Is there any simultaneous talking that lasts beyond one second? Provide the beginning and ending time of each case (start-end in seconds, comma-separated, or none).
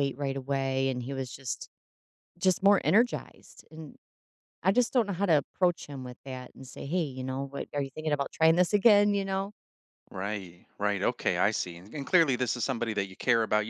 none